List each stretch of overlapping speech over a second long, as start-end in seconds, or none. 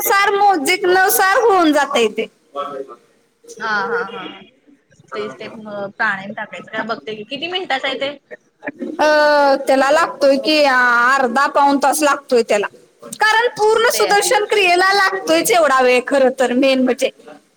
none